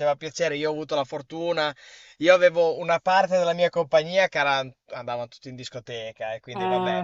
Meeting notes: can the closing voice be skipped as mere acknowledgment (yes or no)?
yes